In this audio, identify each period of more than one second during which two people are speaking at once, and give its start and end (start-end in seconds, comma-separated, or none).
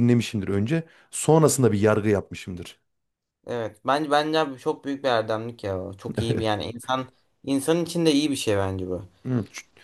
none